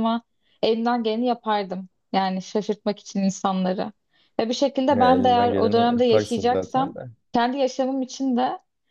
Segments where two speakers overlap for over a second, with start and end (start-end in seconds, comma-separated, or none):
4.9-6.9